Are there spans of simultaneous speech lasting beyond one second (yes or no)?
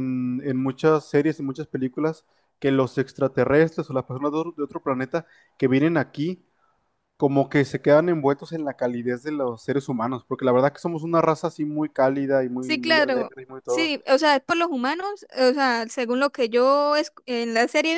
yes